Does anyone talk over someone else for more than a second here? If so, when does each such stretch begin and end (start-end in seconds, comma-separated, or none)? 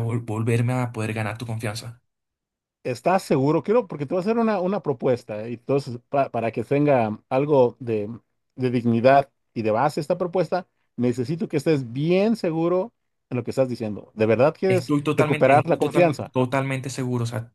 14.7-16.3